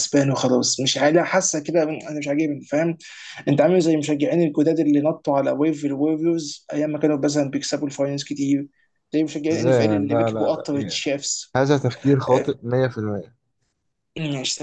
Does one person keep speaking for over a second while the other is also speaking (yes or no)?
yes